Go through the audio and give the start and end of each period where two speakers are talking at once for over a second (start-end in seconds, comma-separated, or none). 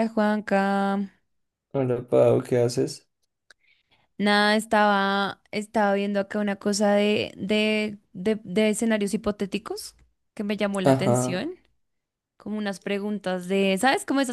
none